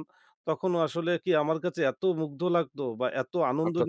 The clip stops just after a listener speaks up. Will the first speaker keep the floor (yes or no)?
yes